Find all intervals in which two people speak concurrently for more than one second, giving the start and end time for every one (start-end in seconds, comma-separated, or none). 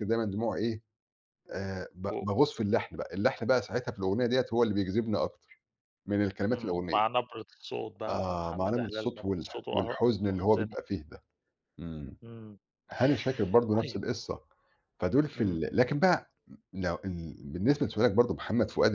8.1-10.8